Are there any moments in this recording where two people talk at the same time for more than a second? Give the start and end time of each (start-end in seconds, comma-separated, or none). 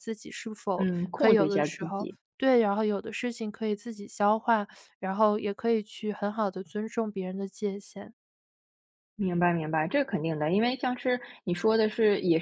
0.8-2.2